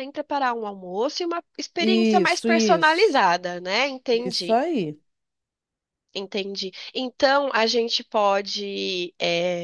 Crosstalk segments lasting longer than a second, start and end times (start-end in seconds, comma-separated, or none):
1.8-3.2